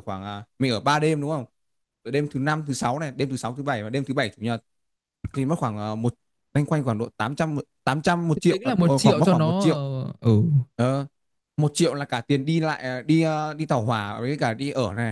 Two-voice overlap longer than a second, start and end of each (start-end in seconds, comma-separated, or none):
8.5-9.8